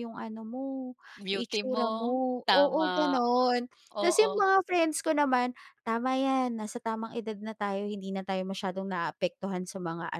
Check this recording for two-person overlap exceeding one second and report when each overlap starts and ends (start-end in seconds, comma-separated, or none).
1.3-3.1